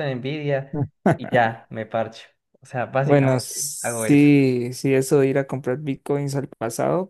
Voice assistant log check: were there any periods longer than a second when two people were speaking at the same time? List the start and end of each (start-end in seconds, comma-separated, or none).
3.0-4.3